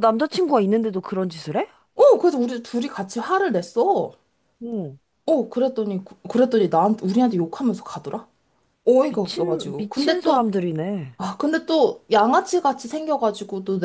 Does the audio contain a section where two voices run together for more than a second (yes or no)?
yes